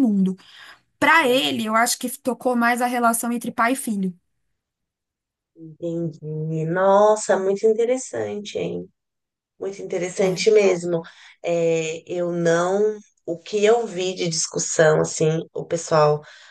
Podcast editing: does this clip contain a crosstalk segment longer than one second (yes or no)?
no